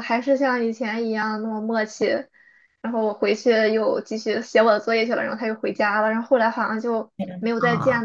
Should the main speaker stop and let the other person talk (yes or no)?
no